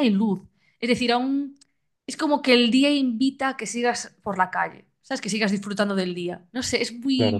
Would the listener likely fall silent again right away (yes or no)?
yes